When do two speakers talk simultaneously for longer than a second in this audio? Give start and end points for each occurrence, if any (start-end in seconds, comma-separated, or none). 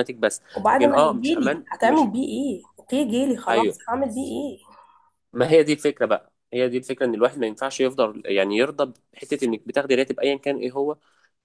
0.5-2.1